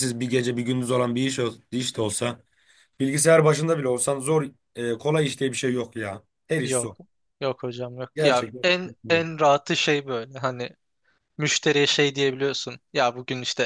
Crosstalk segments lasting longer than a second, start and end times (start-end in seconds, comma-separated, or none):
none